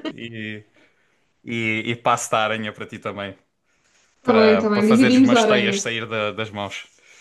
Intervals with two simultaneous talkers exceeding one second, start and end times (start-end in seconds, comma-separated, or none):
4.2-5.8